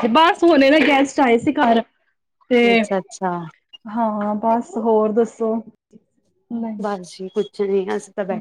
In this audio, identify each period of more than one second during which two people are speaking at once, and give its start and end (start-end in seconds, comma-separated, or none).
none